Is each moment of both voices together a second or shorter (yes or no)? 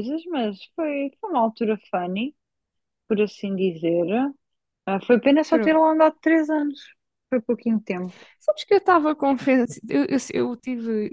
yes